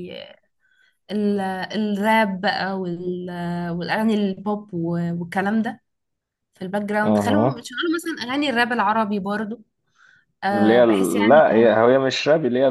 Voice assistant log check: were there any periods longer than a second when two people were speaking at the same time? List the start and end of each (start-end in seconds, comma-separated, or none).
10.5-11.8